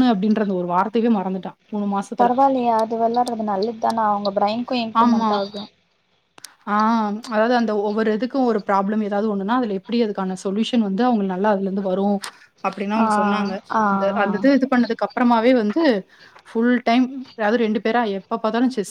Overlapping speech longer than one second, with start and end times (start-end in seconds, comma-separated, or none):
none